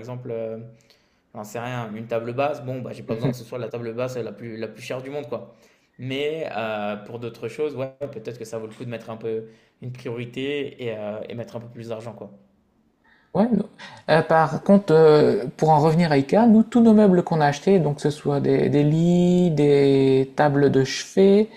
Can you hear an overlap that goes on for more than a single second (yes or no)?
no